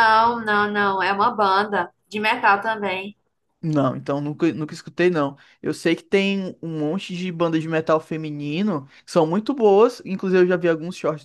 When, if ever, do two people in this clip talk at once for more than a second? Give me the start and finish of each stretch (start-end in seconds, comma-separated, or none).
none